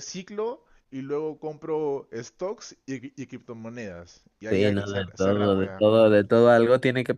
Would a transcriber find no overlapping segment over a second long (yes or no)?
no